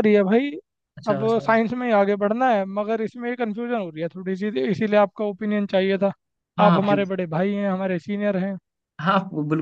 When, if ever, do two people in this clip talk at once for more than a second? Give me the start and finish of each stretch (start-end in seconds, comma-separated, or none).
none